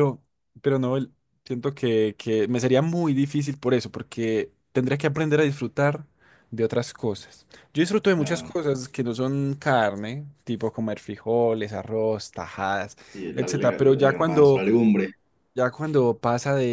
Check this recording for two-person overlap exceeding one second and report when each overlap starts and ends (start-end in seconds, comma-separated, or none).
13.3-14.6